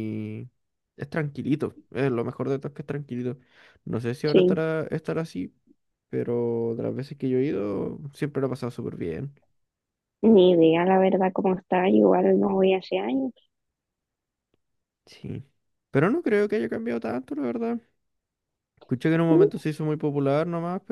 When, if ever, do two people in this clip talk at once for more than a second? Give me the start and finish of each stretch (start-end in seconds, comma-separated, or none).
none